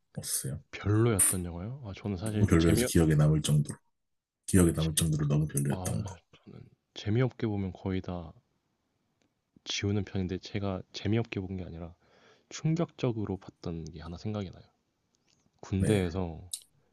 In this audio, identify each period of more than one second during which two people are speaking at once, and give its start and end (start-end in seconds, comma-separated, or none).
none